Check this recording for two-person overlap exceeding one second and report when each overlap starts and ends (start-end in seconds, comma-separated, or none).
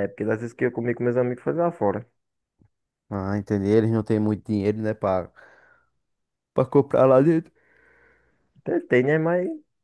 none